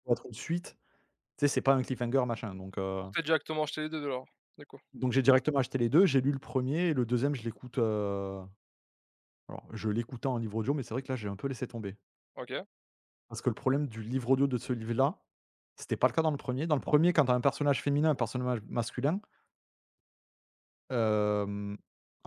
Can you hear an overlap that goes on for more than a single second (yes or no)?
no